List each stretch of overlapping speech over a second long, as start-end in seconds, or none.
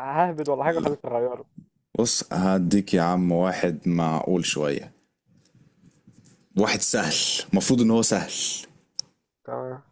none